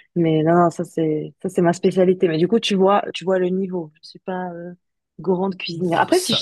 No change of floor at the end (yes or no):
no